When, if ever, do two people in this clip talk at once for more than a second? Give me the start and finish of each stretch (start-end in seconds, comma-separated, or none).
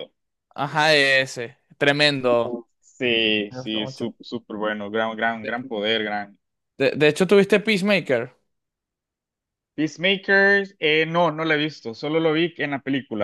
none